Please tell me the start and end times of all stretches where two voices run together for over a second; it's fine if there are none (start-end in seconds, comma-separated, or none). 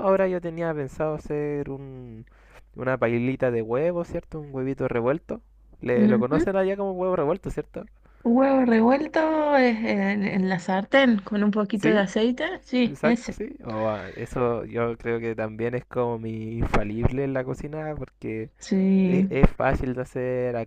none